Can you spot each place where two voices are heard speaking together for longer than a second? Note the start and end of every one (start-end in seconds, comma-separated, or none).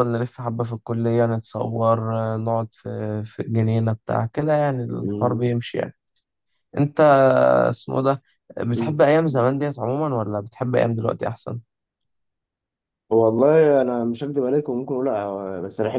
none